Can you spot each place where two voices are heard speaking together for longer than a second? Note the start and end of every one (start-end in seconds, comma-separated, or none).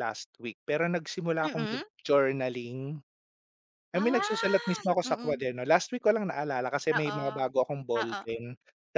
3.9-5.4